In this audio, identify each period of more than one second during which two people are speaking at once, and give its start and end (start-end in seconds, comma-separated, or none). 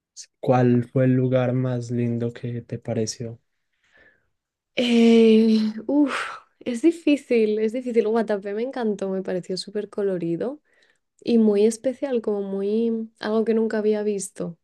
none